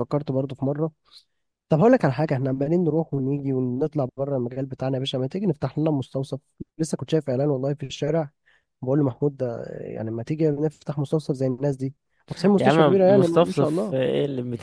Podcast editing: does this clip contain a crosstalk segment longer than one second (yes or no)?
yes